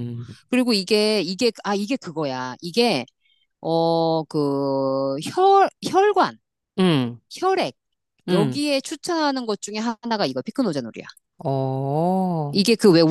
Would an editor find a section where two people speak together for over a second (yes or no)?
no